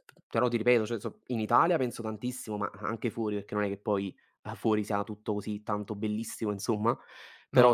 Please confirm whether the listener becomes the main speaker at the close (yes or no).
no